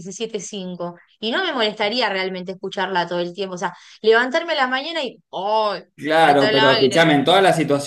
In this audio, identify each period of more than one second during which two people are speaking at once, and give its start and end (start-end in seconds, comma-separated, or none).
6.0-7.2